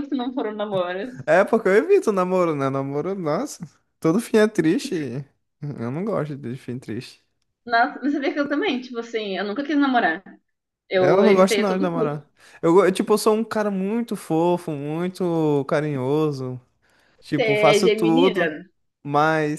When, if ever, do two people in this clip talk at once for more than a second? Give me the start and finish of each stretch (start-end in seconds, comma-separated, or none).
11.0-12.3, 17.4-18.6